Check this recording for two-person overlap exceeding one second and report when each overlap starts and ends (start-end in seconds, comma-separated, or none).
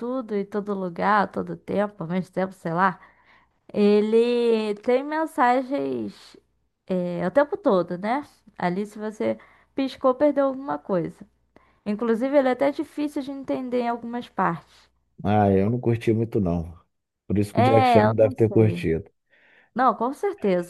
17.5-18.9